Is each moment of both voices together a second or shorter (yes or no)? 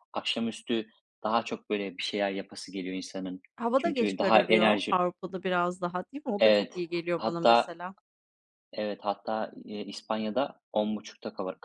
no